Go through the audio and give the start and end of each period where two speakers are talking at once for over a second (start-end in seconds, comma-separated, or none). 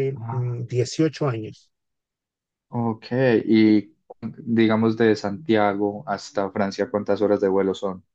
none